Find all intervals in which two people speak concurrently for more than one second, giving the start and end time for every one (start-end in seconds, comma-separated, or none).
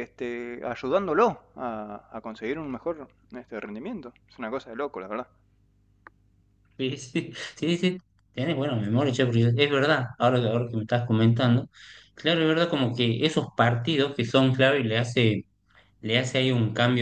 none